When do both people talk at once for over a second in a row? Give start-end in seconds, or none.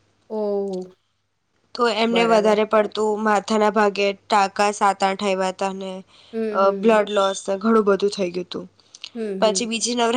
none